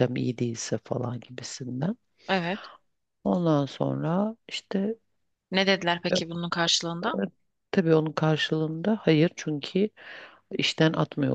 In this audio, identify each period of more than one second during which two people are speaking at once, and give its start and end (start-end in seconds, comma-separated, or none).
none